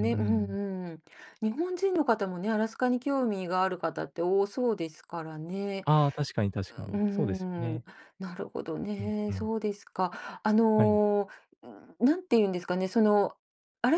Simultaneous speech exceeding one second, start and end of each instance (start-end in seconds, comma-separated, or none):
none